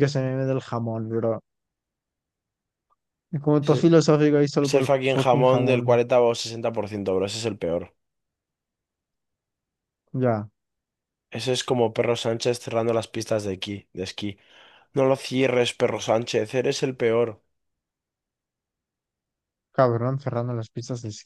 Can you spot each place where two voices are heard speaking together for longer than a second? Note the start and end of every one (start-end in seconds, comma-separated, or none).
4.6-6.0